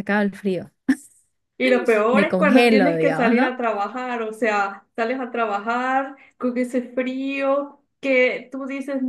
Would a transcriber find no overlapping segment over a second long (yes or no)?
no